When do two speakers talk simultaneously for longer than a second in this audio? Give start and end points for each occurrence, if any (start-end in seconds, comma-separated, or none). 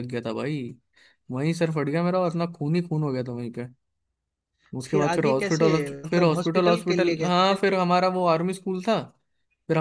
4.9-7.6